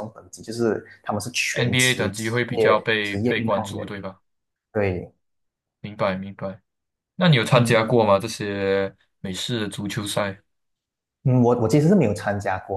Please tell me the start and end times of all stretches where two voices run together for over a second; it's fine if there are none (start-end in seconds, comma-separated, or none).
1.5-3.9